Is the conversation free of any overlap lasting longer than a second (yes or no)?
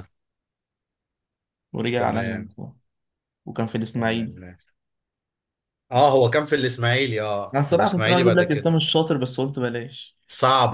no